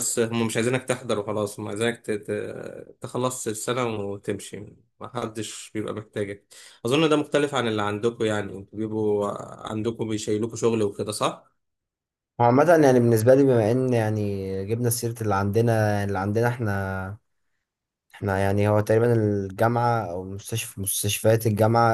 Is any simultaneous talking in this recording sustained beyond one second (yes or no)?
no